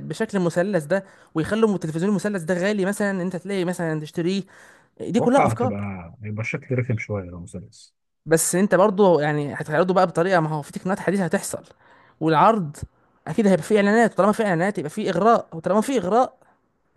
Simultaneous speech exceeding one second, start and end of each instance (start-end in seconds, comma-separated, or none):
none